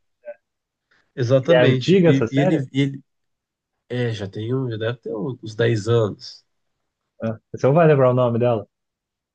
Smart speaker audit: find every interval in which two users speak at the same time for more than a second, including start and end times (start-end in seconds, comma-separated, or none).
1.4-2.7